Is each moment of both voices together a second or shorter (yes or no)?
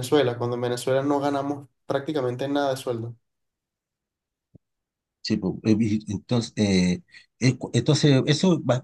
yes